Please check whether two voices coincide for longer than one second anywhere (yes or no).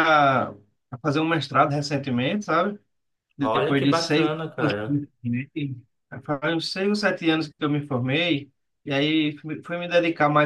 yes